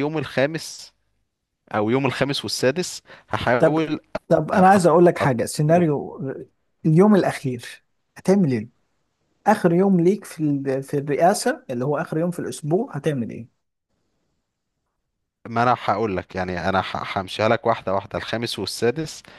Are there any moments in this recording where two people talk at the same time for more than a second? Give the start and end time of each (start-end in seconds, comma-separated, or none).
4.5-5.9